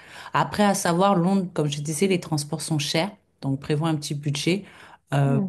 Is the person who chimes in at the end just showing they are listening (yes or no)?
yes